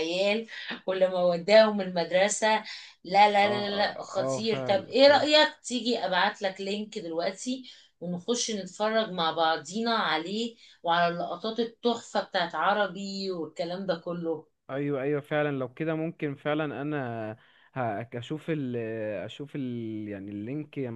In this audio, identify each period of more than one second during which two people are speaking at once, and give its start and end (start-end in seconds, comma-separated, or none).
3.4-4.8